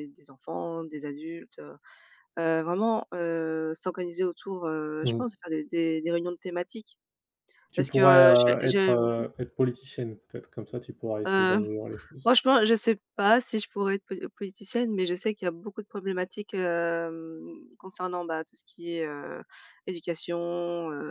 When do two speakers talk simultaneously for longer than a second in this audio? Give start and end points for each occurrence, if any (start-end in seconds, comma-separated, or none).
7.8-9.2